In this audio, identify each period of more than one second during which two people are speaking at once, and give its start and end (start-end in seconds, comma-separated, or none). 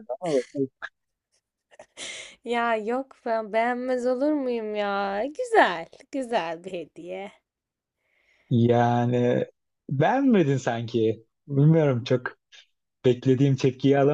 none